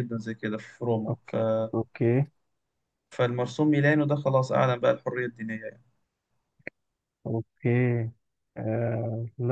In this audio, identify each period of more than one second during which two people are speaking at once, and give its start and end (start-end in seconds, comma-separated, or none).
none